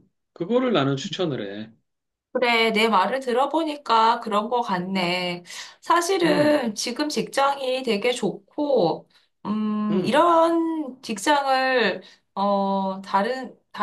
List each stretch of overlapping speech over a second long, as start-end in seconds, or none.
none